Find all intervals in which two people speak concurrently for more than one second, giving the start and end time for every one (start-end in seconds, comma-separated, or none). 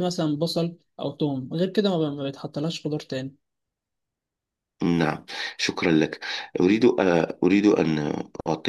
none